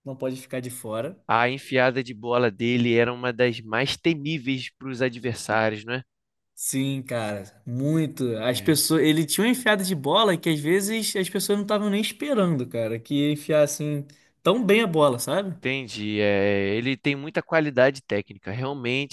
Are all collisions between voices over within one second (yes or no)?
yes